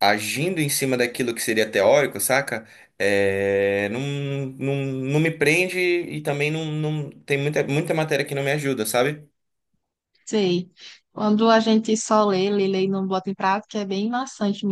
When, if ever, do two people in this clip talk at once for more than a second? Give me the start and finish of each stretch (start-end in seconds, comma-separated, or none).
none